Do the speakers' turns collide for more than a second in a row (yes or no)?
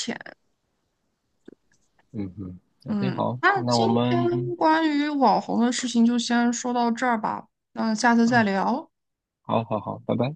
yes